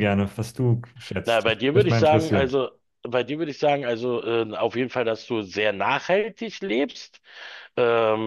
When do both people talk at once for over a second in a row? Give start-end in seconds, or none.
1.2-2.5